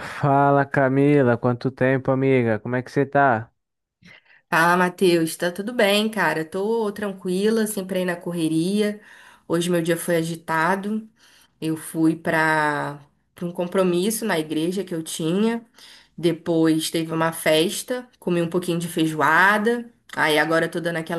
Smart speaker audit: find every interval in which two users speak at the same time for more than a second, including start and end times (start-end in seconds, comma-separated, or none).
none